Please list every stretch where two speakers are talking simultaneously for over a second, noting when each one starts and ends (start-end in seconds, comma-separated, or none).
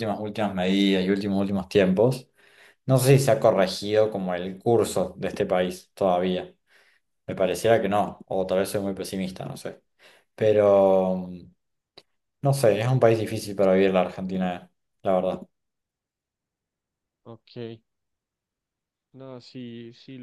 none